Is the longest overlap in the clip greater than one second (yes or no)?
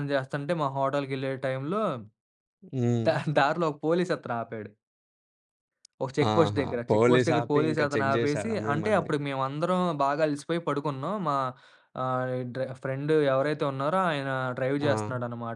yes